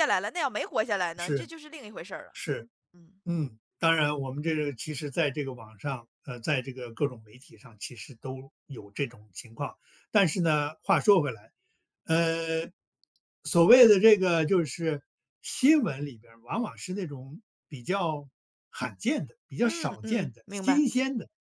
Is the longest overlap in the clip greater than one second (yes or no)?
yes